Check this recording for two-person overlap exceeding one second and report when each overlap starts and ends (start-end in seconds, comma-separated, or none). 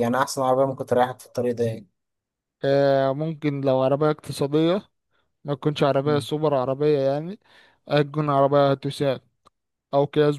none